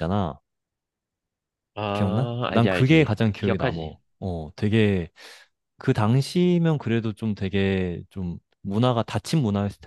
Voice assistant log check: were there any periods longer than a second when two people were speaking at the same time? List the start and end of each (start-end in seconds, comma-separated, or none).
1.9-4.0